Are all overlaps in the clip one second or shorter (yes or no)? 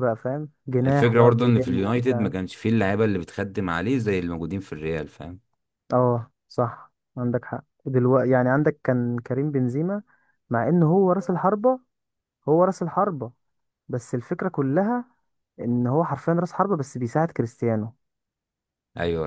no